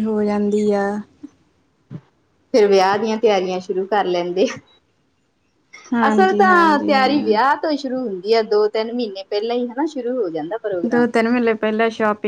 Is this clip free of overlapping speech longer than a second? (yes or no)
no